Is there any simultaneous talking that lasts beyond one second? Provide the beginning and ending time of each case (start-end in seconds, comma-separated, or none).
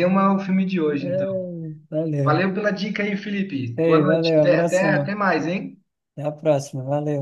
3.8-5.2